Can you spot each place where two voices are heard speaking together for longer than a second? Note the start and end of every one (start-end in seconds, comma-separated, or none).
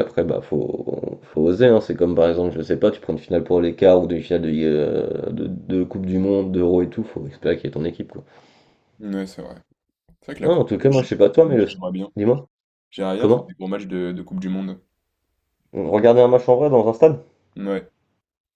10.4-11.7